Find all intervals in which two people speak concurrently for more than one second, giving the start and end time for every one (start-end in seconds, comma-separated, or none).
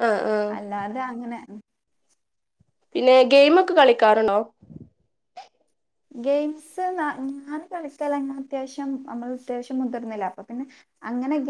none